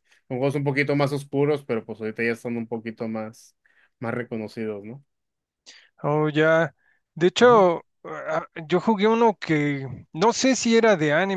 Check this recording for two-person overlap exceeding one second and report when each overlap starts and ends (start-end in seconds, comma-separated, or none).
none